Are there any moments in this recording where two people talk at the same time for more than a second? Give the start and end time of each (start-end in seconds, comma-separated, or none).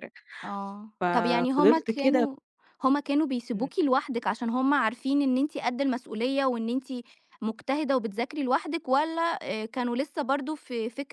1.0-2.3